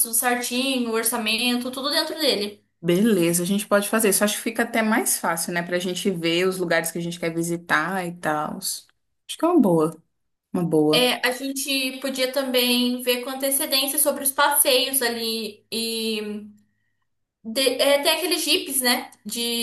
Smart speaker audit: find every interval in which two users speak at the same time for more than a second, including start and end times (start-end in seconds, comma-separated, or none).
none